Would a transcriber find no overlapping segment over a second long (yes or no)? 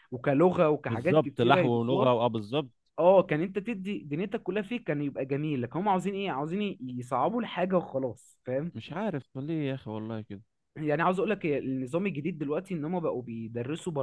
no